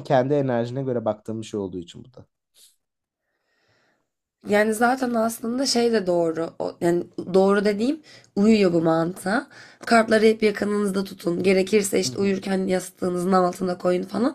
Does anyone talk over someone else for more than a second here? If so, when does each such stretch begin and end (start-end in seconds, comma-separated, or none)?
none